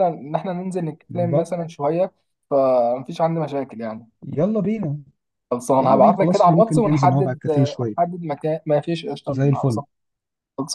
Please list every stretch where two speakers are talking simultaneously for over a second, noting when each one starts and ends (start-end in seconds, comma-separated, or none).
5.8-8.0